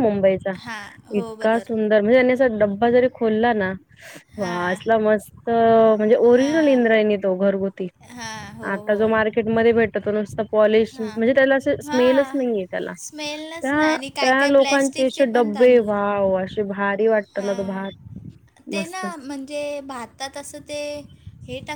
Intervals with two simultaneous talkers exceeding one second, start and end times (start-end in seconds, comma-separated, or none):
13.6-15.9